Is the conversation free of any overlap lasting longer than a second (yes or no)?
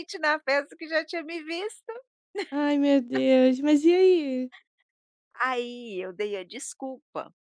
yes